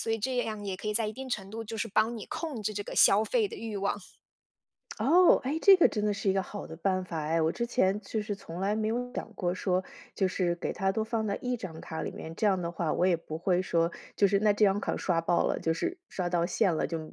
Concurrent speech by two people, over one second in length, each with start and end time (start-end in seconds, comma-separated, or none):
none